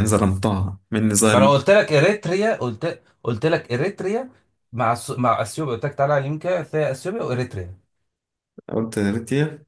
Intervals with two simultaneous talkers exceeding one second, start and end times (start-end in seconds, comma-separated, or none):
none